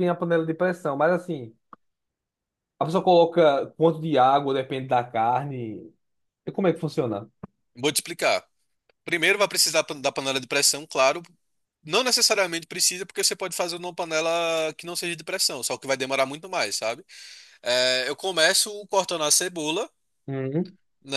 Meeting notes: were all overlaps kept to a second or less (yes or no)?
yes